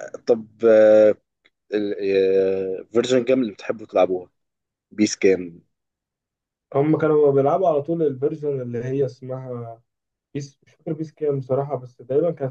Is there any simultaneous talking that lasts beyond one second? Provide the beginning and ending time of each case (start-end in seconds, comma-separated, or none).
none